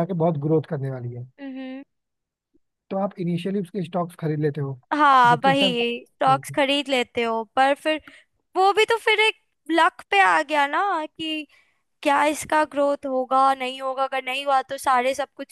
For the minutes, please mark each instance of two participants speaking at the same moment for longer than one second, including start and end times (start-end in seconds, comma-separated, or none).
none